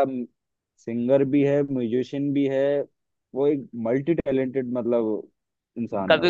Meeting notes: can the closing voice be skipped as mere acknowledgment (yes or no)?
no